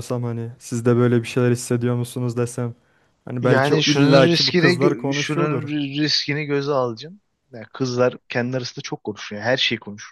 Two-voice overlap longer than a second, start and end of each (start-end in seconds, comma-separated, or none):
3.4-5.7